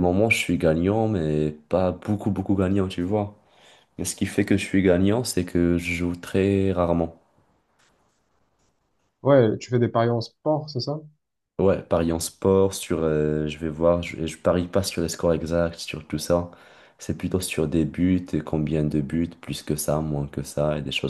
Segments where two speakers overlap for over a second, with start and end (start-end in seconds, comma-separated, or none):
none